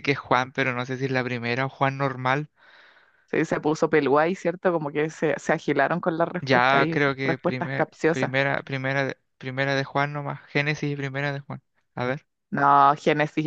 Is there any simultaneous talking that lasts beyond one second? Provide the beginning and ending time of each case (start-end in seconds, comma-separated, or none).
6.4-8.3